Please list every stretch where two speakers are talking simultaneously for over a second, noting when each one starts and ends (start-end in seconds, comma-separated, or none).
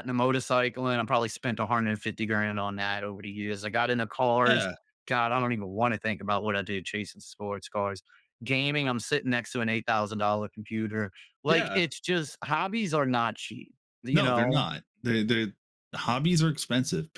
none